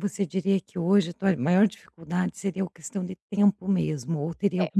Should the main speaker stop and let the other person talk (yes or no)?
no